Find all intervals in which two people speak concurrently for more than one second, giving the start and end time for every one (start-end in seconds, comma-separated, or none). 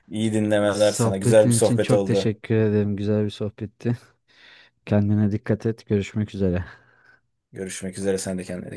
0.7-2.3